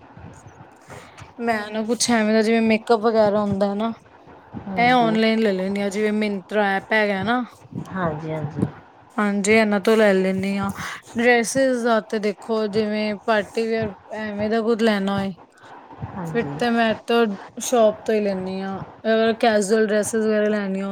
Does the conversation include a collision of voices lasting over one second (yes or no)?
no